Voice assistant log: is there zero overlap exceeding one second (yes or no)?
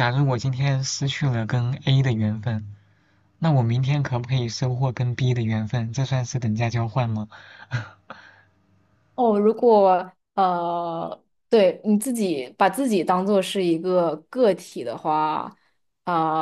yes